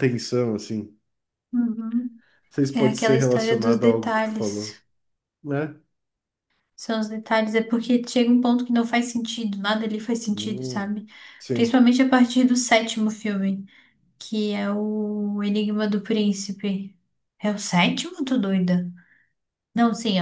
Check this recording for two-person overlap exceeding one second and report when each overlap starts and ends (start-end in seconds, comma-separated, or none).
2.7-4.8